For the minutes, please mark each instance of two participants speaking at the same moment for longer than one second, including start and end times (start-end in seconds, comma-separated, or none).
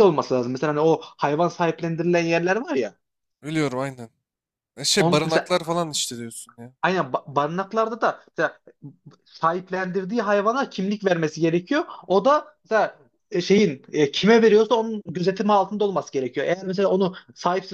none